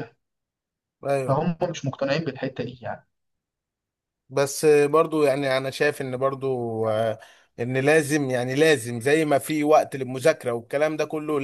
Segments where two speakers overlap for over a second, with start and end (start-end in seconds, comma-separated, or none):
none